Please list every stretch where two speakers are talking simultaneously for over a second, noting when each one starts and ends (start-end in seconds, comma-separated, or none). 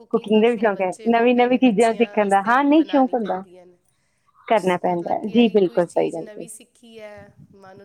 0.5-3.4, 4.6-6.5